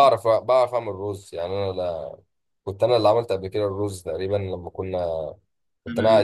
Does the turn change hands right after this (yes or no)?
no